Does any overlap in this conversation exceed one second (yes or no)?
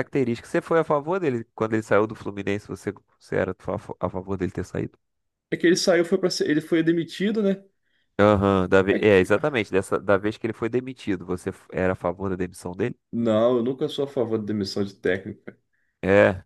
no